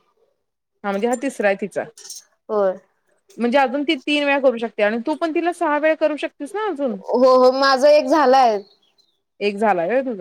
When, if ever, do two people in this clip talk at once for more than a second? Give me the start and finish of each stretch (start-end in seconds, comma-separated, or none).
none